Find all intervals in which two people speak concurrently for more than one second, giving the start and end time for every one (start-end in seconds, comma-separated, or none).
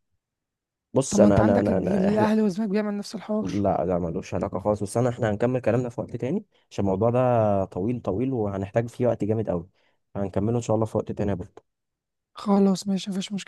1.1-2.3